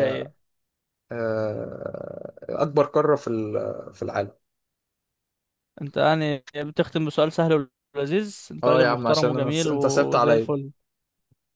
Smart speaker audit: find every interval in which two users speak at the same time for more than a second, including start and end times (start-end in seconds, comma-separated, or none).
8.6-10.5